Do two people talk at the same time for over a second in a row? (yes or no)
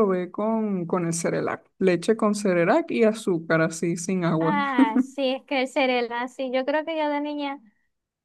no